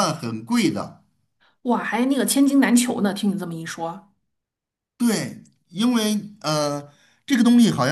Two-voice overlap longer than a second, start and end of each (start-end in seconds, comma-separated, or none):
none